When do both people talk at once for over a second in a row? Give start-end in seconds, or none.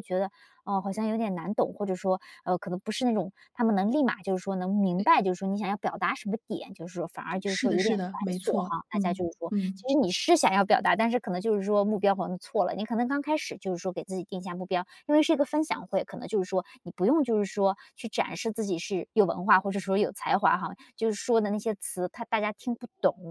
7.5-9.8